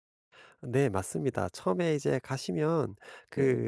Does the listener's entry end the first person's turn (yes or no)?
no